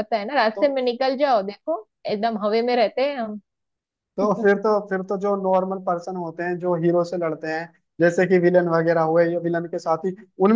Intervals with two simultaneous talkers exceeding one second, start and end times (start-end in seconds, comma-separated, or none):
none